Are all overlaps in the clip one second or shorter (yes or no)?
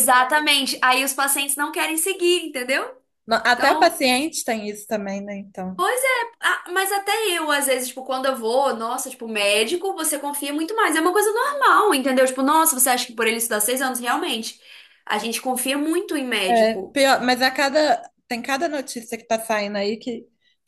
yes